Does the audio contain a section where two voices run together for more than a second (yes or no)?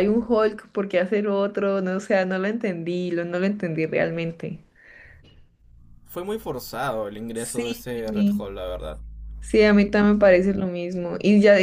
no